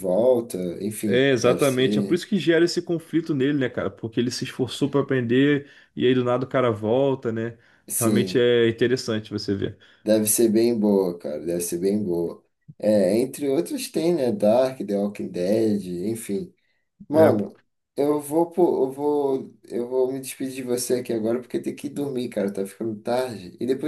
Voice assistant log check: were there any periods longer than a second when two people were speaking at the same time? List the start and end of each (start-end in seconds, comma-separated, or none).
1.1-2.2